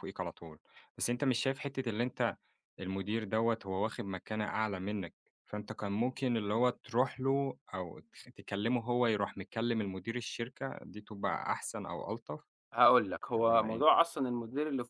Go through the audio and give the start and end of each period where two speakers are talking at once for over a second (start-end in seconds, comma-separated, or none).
none